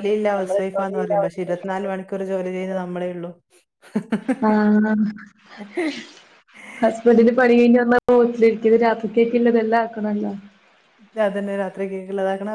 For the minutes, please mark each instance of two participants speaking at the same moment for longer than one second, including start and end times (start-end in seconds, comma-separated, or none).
none